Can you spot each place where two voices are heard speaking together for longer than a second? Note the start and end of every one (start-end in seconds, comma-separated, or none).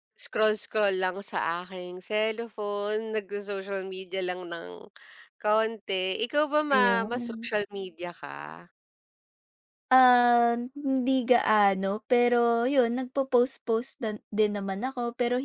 none